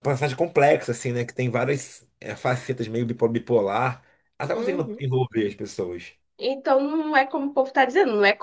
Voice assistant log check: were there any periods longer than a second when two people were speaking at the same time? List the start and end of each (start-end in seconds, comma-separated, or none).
none